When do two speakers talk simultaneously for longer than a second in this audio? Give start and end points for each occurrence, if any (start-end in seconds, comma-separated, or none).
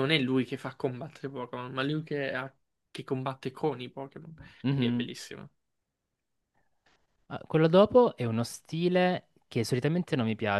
none